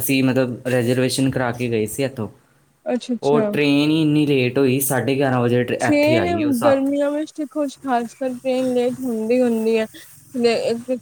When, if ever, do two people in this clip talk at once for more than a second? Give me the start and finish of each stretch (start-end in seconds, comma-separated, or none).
none